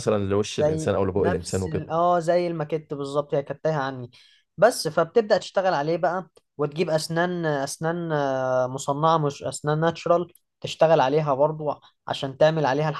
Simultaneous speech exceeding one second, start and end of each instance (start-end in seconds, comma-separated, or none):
0.6-1.8